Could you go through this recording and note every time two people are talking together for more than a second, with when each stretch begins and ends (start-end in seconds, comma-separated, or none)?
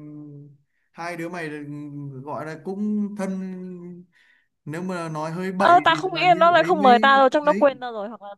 5.6-7.7